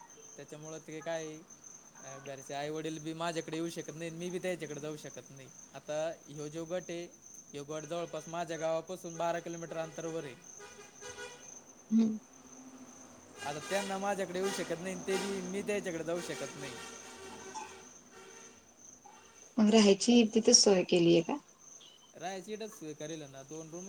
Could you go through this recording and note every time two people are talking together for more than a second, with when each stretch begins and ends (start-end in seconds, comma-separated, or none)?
none